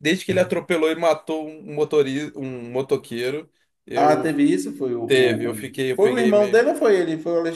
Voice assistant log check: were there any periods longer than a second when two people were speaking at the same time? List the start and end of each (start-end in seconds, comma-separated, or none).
5.0-6.6